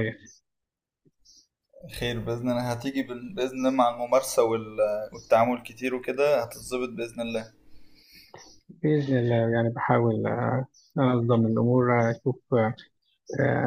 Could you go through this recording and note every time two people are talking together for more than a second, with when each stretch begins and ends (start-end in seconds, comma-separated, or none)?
none